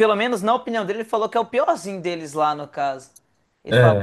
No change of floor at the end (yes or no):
no